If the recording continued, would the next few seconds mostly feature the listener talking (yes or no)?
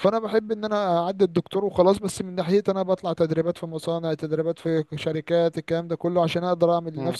no